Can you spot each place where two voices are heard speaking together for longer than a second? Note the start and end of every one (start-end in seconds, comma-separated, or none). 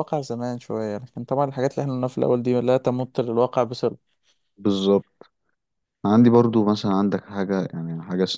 none